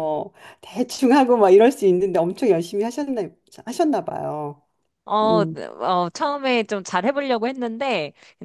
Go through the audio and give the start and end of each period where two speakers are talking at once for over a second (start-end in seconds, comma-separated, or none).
none